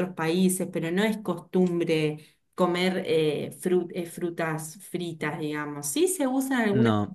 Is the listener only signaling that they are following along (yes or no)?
yes